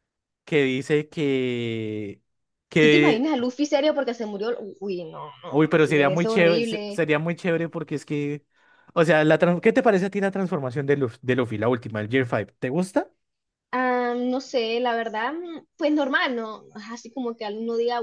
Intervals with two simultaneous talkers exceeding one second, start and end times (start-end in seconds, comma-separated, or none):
5.5-7.0